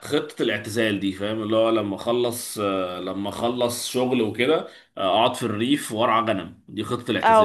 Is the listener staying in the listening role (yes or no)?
no